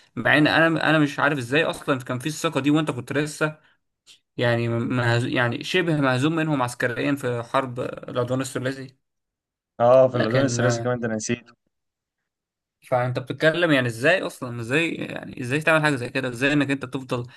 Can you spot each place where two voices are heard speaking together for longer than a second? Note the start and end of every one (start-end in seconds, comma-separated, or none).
none